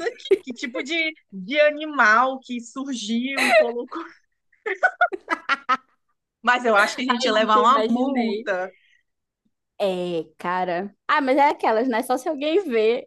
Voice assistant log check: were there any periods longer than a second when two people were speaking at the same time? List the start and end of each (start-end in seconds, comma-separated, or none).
7.1-8.5